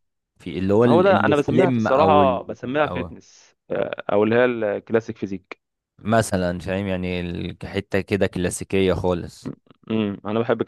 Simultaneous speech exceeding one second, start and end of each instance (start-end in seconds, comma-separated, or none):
0.8-3.1